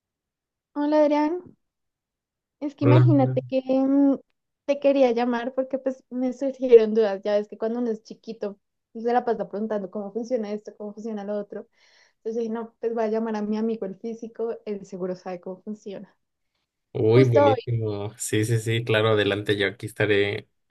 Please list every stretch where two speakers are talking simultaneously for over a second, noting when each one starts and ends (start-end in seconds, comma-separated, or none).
none